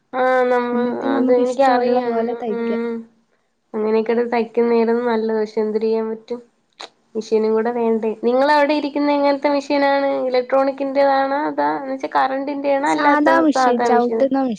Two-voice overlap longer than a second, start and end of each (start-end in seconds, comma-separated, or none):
0.7-2.7